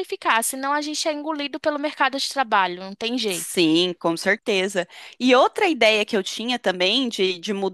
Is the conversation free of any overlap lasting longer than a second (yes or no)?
yes